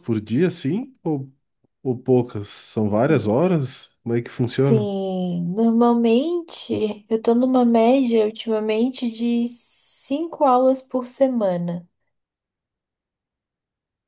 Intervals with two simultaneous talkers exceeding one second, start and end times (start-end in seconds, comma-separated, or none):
none